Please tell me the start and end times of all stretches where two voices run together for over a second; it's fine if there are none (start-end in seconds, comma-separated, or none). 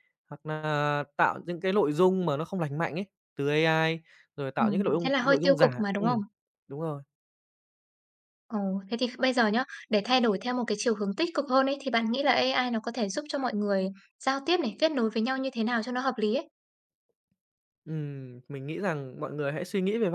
4.6-6.2